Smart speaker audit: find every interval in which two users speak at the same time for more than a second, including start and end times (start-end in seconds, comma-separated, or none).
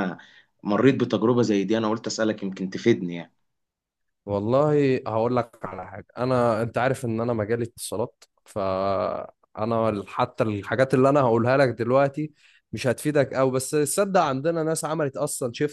none